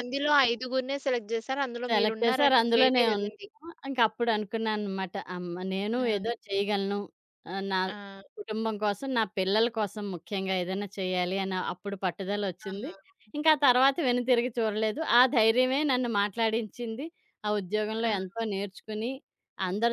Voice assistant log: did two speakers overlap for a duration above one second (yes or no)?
yes